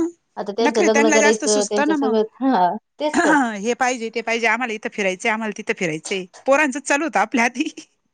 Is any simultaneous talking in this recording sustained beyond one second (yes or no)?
yes